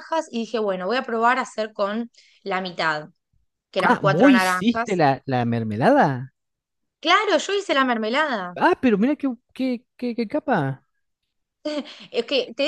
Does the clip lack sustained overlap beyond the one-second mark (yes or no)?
no